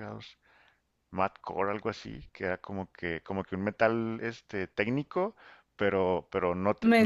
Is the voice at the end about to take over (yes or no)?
no